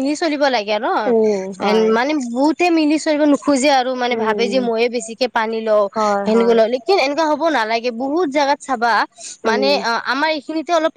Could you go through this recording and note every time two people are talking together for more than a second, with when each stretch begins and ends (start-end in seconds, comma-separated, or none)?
none